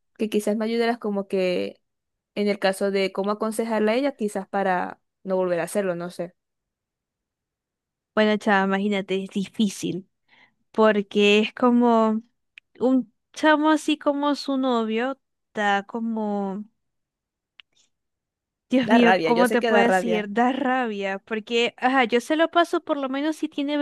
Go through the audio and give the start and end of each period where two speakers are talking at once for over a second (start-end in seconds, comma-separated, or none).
18.9-20.2